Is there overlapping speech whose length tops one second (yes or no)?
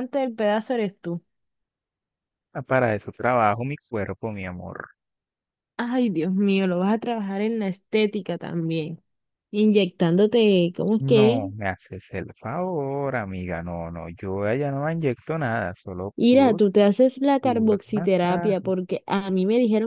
yes